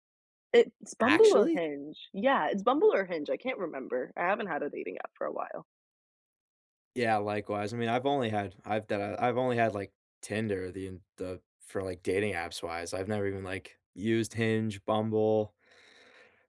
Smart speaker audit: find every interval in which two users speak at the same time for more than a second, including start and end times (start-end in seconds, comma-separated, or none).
none